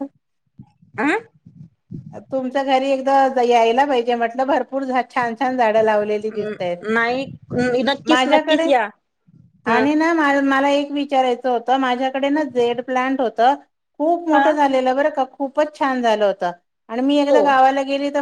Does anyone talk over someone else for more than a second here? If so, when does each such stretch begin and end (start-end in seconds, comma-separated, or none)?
none